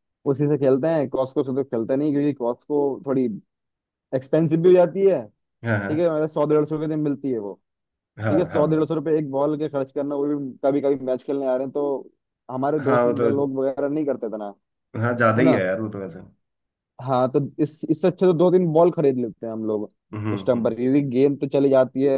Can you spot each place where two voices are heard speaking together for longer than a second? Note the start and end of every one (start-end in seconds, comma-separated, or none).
none